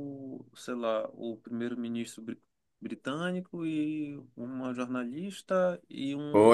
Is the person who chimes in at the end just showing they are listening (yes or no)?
no